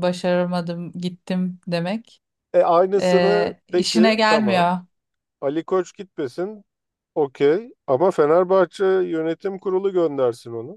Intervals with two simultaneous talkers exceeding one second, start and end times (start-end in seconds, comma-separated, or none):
3.0-4.7